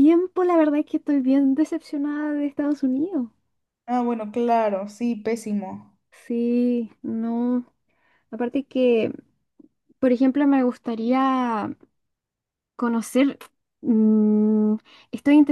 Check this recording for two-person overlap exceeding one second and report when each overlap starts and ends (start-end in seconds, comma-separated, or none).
none